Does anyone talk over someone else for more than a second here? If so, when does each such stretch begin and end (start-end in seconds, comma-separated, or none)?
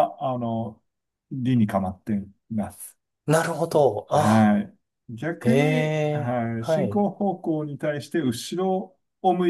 5.4-7.0